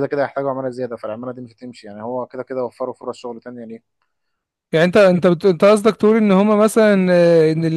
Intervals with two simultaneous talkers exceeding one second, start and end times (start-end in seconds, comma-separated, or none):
none